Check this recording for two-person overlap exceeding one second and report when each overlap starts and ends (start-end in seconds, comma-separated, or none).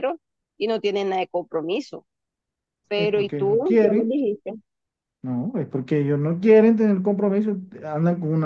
3.0-4.2